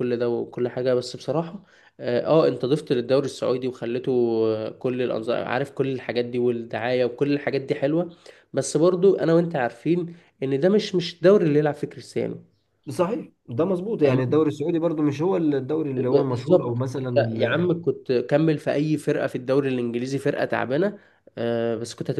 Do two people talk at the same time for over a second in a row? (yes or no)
yes